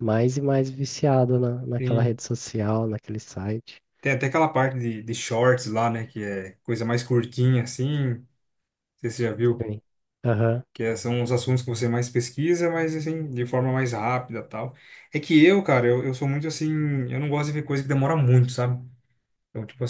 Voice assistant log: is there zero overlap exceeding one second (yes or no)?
yes